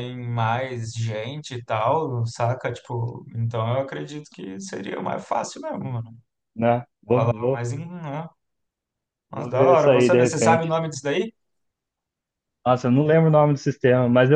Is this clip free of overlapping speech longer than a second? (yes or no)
no